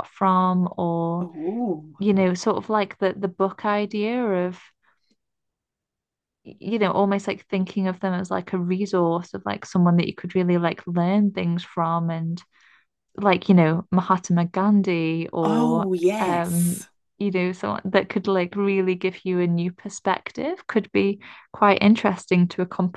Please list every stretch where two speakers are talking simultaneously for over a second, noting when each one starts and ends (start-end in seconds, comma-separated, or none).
15.4-16.8